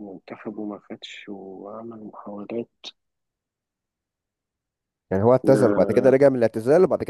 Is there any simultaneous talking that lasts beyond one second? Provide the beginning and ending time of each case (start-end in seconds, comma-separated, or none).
none